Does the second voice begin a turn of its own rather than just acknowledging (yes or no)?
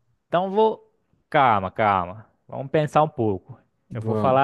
no